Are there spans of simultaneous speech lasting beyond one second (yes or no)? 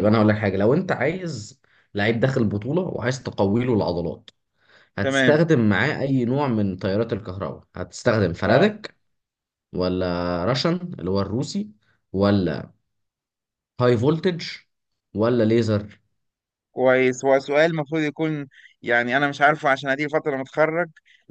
no